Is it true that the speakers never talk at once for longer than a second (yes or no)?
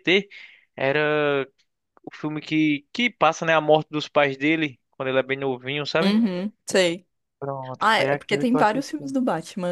no